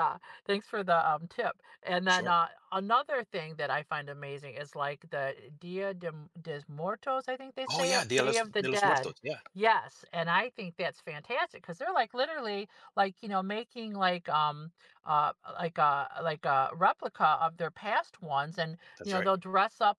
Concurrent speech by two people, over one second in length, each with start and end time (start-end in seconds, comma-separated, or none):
7.7-9.1